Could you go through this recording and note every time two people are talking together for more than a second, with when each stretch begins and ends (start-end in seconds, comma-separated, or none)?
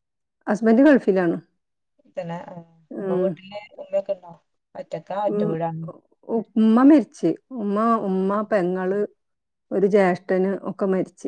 none